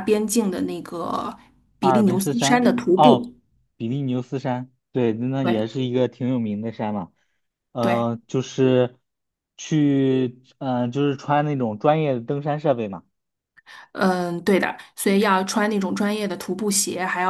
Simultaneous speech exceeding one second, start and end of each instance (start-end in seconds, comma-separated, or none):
1.8-3.2